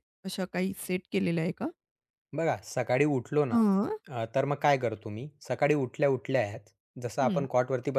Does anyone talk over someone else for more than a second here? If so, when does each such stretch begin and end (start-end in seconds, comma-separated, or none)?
none